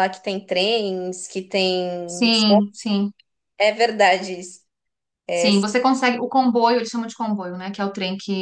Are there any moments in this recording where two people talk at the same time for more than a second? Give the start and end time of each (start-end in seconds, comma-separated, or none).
none